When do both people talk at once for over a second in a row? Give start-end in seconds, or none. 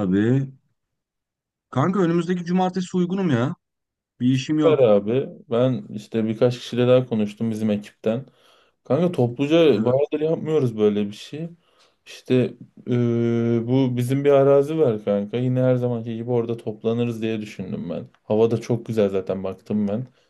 none